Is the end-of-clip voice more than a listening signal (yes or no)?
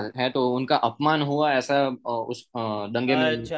yes